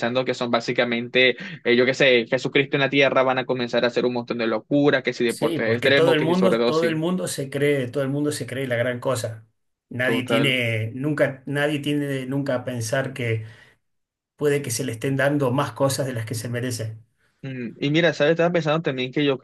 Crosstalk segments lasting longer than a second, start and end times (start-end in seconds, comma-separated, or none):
5.3-7.0